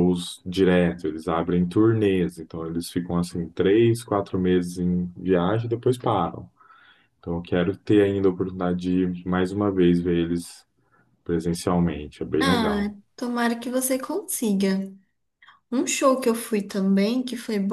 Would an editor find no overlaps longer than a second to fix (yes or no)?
yes